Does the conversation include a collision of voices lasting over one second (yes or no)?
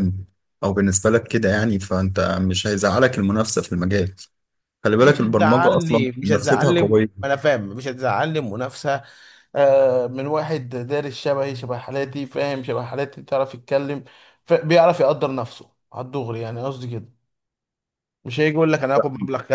yes